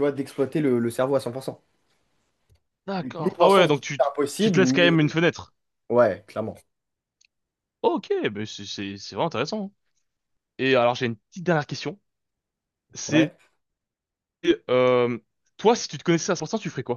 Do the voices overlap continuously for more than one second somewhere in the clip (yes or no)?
yes